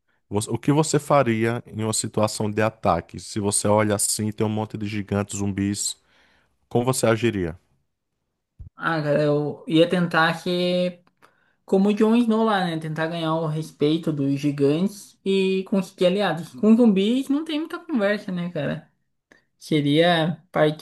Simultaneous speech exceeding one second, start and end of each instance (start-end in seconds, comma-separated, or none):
none